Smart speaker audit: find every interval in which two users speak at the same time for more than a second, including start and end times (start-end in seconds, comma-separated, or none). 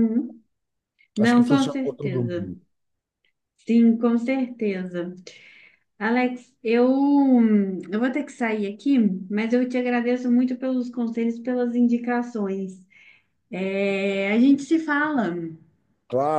1.2-2.5